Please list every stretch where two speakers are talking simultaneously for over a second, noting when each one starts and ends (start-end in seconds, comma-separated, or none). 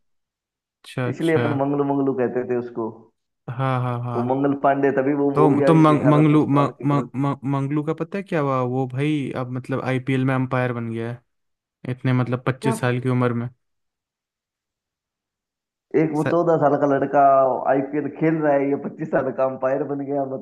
5.3-7.1